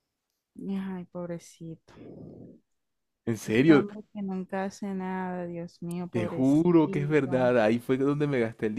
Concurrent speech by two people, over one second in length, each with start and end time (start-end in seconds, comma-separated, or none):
6.1-7.5